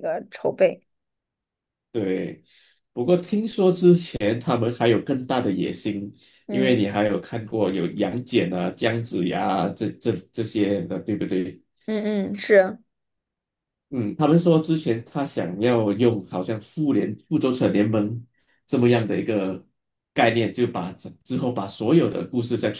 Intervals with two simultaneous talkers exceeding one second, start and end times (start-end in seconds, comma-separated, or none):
none